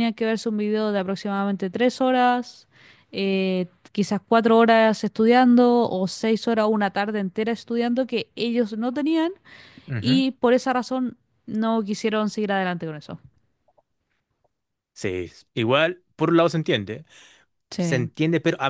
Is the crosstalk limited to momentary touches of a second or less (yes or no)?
yes